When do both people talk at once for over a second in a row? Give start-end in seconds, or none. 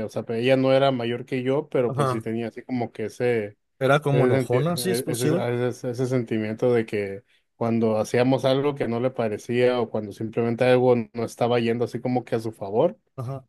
4.1-5.5